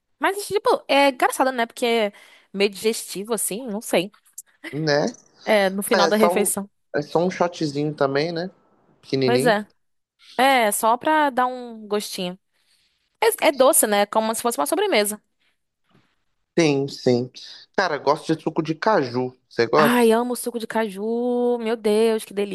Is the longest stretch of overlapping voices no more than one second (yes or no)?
yes